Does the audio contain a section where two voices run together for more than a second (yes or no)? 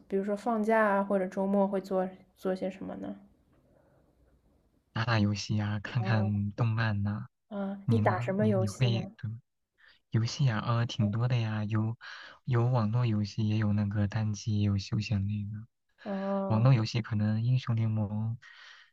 yes